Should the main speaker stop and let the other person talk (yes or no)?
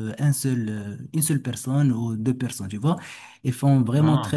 no